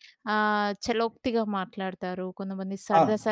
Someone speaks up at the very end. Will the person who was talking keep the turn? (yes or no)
yes